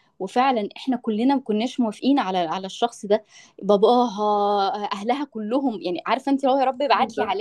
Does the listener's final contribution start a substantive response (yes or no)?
no